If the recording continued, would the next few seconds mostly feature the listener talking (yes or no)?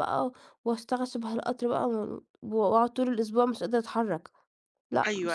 yes